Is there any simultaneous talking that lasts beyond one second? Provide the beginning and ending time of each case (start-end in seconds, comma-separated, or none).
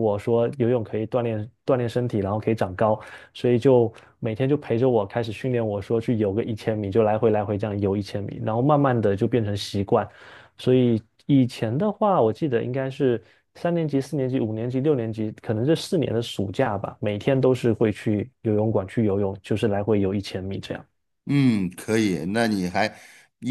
none